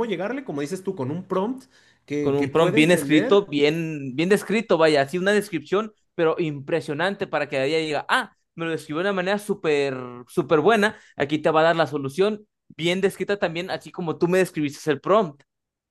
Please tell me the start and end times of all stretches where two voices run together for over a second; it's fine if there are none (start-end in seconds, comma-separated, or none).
2.2-3.5